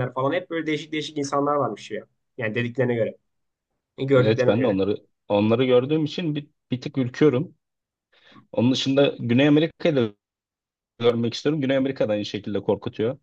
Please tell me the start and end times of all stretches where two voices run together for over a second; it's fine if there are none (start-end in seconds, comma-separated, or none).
none